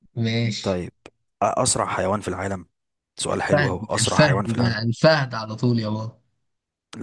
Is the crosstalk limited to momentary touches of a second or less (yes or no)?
no